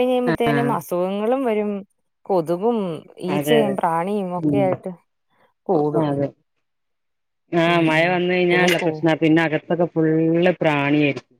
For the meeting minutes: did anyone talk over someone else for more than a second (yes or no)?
no